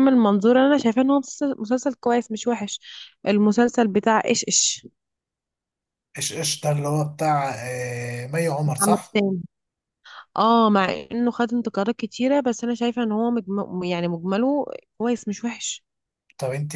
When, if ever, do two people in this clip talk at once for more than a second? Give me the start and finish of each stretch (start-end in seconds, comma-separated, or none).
none